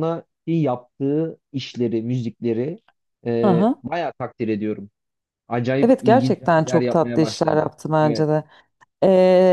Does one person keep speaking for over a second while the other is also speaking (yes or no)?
yes